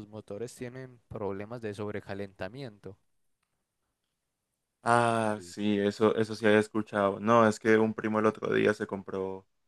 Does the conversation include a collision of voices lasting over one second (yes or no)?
no